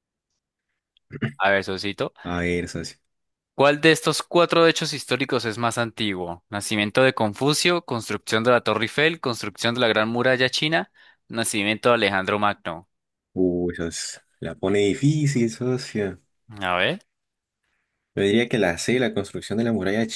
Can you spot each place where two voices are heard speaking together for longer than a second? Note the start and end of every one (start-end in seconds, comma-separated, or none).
none